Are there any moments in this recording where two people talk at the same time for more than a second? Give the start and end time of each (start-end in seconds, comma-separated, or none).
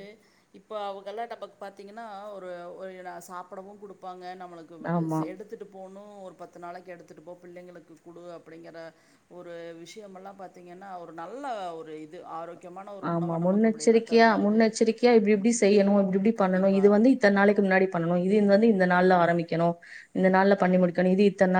none